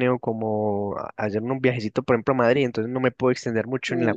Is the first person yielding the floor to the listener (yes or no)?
no